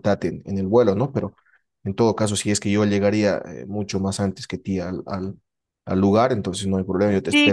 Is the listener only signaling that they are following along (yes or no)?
no